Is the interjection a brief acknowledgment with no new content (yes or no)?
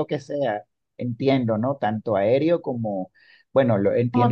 yes